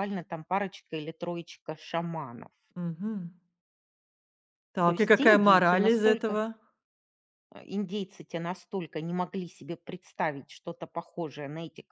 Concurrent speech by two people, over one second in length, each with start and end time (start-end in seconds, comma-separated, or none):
4.9-6.4